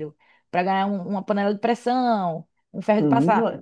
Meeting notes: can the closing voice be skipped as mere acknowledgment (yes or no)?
no